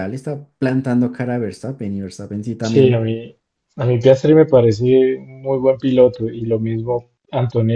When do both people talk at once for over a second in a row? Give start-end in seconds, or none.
none